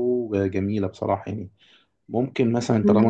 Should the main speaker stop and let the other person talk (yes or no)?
yes